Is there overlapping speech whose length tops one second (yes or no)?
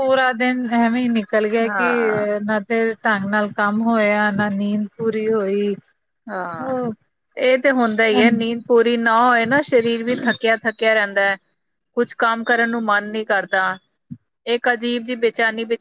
no